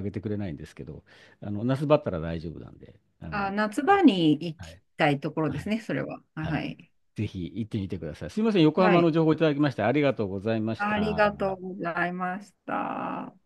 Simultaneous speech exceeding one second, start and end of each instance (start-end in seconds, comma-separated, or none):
none